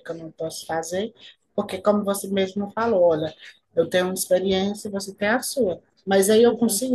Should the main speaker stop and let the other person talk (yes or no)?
no